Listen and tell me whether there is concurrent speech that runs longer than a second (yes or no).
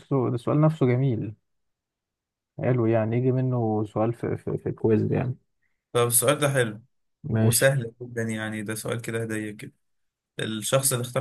no